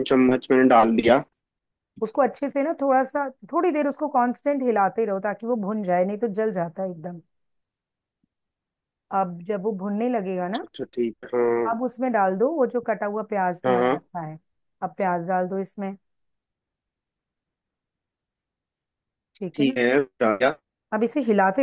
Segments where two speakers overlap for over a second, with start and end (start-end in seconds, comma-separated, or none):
none